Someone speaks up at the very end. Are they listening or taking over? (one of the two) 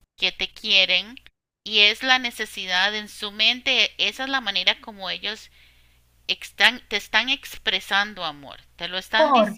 listening